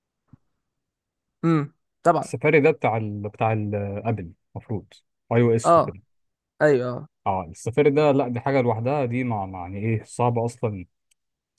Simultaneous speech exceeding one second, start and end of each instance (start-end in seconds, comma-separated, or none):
none